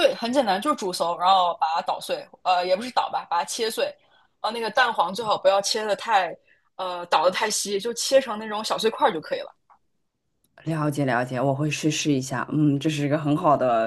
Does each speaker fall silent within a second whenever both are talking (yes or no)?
yes